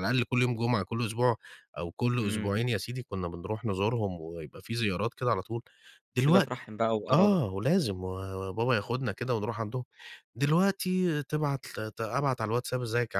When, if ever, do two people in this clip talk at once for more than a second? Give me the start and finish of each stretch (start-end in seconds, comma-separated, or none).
none